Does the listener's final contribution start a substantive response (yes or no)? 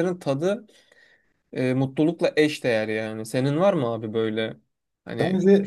yes